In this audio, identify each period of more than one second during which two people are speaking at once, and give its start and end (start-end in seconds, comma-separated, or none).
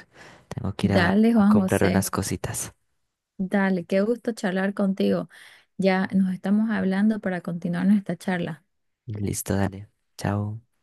0.8-2.1